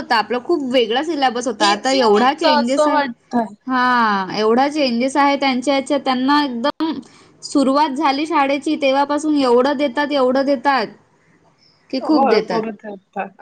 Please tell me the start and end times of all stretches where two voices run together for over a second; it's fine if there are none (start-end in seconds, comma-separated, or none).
1.7-3.0